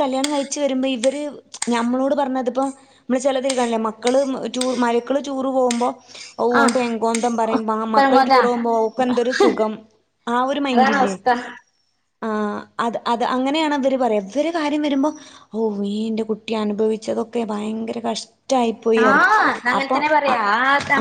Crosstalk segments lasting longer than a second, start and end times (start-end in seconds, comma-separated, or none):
none